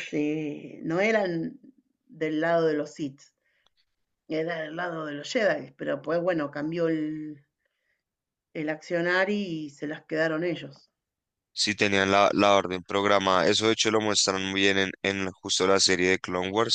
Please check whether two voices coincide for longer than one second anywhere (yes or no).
no